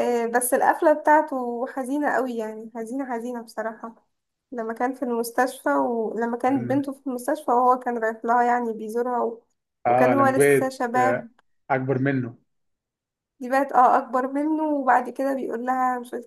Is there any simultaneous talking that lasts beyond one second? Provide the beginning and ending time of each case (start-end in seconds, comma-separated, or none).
9.9-11.3